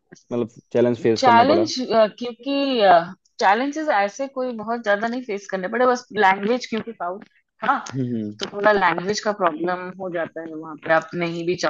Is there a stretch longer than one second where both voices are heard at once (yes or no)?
no